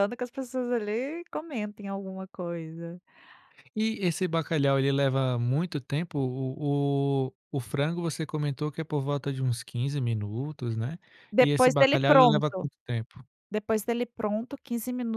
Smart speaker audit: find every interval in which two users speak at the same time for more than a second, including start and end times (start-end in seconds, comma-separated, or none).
11.4-12.6